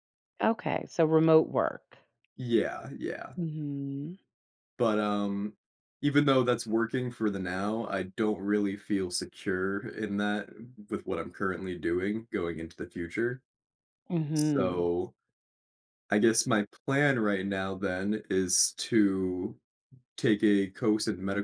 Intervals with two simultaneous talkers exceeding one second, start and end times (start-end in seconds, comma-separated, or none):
none